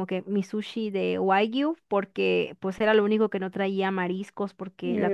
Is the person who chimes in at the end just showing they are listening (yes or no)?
yes